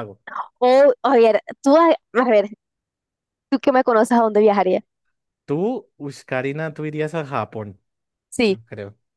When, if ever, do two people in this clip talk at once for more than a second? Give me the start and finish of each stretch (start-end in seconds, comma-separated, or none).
none